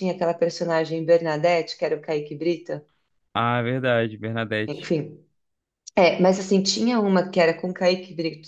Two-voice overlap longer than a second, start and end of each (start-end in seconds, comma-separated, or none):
none